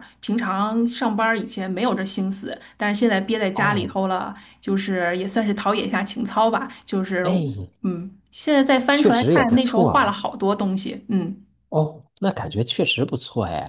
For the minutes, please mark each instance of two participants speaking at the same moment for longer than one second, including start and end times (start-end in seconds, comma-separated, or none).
8.9-10.2